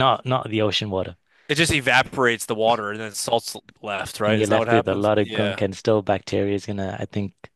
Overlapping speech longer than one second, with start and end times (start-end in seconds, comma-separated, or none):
4.2-5.6